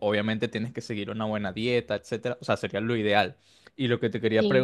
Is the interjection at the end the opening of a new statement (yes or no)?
no